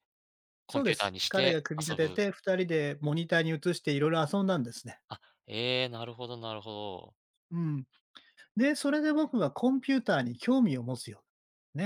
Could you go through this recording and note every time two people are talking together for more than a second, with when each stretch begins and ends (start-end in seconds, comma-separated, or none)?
0.7-2.2